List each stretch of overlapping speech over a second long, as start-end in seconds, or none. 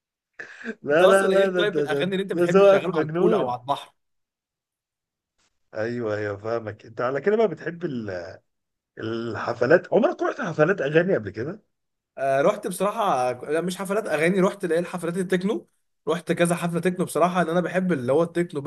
0.9-3.6